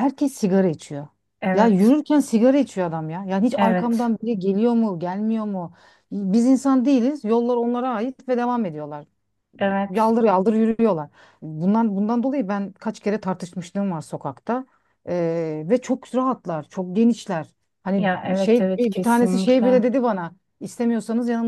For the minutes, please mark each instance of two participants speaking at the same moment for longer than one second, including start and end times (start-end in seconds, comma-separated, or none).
18.0-19.8